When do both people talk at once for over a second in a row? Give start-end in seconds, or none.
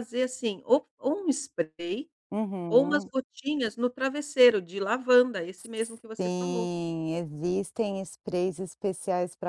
none